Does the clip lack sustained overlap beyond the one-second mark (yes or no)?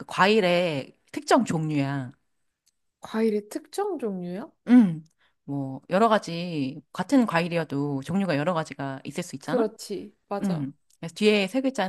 yes